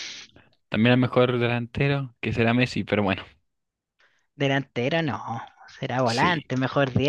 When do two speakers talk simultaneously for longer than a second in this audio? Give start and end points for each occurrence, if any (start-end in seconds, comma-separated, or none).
none